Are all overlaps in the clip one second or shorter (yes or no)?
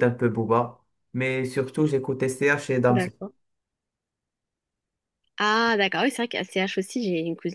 yes